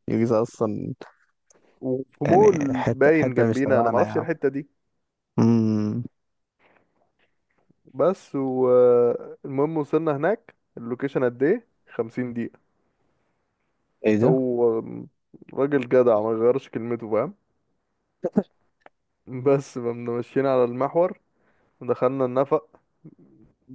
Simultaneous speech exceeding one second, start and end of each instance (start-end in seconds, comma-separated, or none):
2.3-4.3